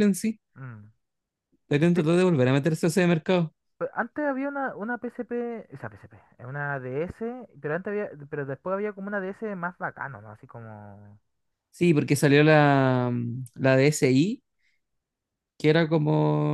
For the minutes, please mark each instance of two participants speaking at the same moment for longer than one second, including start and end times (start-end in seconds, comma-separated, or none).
none